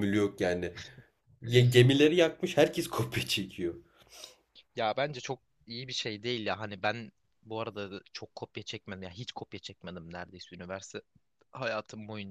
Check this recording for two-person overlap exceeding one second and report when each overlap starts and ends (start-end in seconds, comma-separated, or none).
none